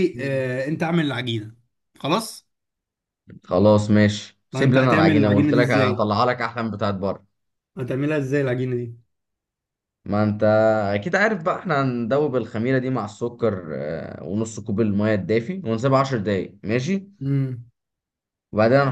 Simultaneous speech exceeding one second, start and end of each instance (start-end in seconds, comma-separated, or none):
4.5-6.1